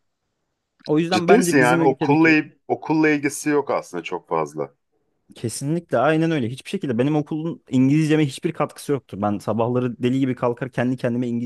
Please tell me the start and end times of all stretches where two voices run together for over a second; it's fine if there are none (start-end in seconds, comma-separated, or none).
1.1-2.4